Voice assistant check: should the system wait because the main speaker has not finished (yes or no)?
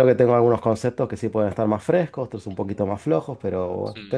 yes